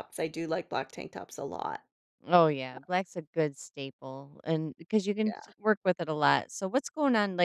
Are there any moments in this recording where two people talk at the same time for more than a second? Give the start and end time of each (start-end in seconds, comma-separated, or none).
none